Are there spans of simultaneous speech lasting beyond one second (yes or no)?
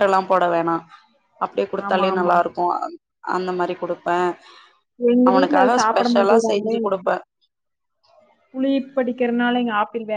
yes